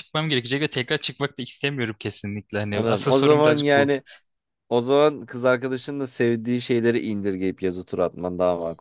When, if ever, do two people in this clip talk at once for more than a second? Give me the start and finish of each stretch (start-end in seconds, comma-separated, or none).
2.7-3.9